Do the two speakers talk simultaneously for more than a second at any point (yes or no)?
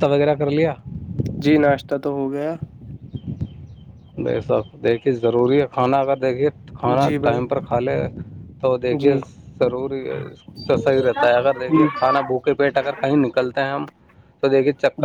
no